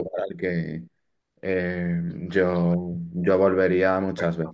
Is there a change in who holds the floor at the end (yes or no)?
yes